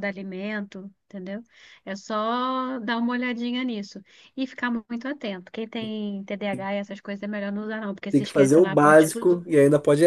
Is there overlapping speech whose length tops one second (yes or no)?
yes